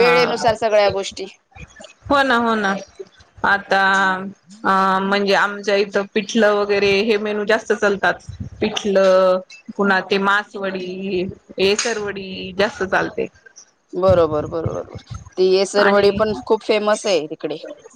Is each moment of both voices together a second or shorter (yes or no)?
yes